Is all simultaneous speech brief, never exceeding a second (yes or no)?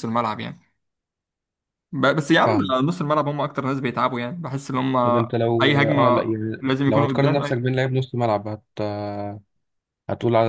no